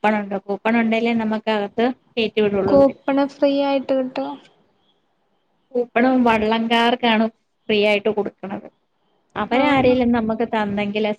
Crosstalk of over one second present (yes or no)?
no